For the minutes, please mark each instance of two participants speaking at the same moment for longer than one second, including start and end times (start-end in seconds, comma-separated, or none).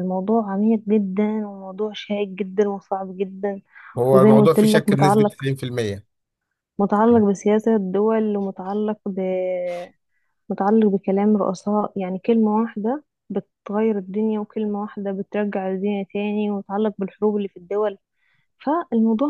4.1-5.5